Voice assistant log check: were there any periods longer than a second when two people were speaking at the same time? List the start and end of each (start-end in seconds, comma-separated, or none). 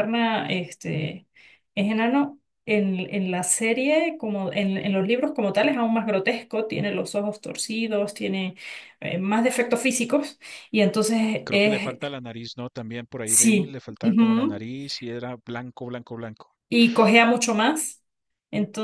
13.2-14.6